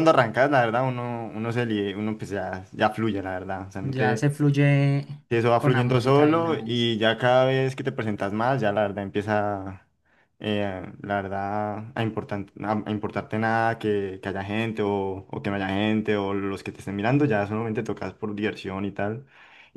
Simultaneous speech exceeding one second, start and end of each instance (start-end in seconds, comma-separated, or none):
5.6-6.9